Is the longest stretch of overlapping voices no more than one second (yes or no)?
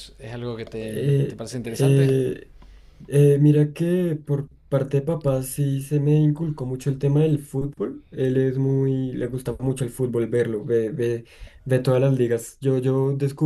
no